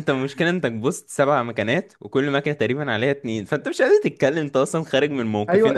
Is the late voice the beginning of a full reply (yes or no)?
yes